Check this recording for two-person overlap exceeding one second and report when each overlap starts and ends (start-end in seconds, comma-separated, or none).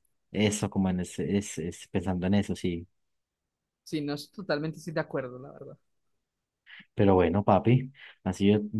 none